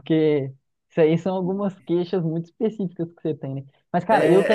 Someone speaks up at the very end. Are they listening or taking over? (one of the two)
taking over